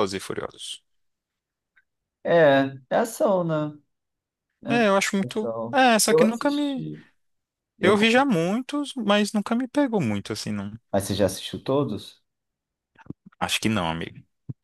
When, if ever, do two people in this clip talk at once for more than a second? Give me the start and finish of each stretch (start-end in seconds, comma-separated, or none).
5.2-6.8